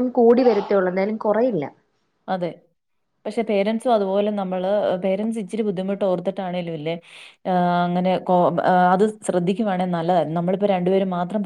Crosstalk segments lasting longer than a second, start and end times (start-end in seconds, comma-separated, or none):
none